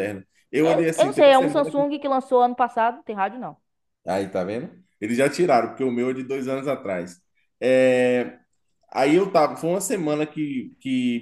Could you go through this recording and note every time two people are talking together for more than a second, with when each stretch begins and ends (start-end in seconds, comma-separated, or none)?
0.6-1.9